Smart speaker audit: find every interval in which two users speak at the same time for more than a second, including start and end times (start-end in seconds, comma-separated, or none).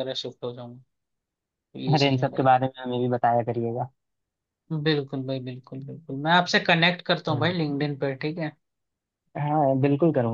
none